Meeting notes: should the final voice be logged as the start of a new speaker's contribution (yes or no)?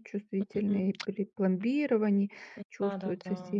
yes